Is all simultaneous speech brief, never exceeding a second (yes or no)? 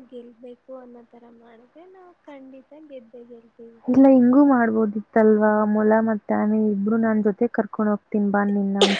yes